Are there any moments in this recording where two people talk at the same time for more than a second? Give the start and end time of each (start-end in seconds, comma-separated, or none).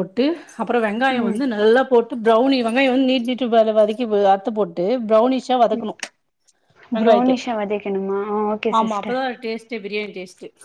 none